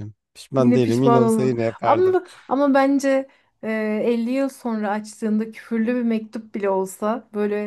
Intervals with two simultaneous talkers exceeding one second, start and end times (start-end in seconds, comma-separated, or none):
0.6-2.2